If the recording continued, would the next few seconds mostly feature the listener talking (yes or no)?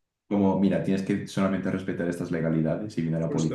yes